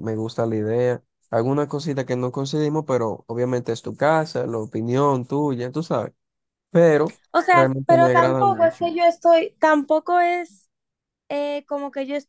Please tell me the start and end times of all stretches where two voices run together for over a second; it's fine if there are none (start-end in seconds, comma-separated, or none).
7.5-8.8